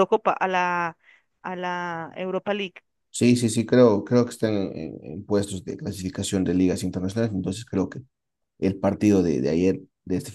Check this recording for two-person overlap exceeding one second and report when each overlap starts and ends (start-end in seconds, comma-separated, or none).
none